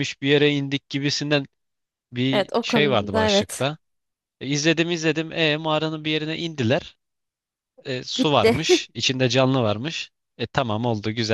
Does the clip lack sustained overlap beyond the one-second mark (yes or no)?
no